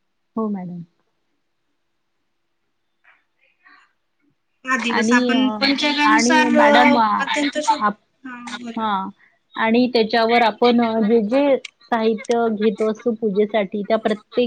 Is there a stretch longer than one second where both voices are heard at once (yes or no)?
yes